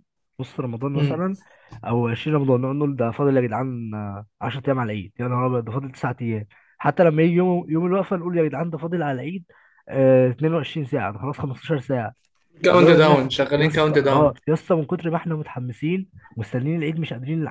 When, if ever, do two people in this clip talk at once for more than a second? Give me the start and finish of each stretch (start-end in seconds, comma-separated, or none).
12.7-14.3